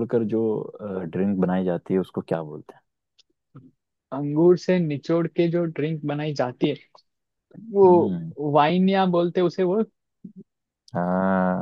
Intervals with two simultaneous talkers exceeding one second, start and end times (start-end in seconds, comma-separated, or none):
none